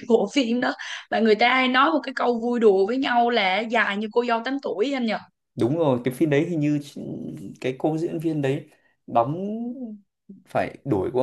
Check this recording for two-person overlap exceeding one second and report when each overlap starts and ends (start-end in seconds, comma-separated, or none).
none